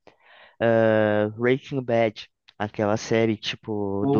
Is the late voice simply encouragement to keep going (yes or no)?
yes